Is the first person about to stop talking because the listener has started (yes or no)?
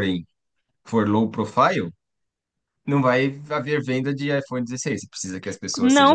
yes